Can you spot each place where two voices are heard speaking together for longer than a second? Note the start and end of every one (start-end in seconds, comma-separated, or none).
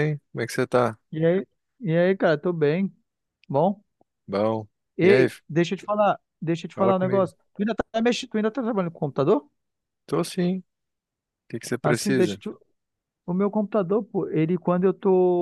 none